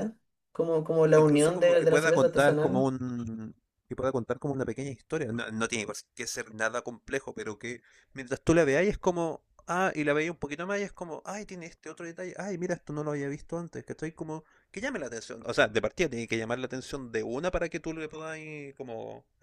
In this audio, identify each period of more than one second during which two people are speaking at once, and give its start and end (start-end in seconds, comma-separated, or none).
1.1-2.9